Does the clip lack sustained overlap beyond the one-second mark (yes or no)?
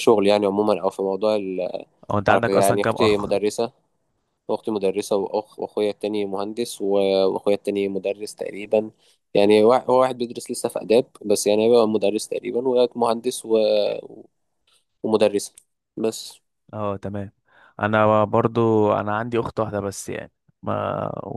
no